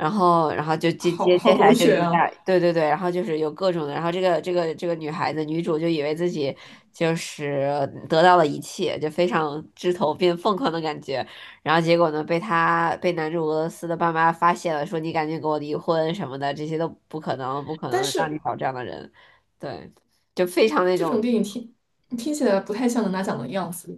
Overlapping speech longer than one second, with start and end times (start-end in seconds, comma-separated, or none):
1.0-2.2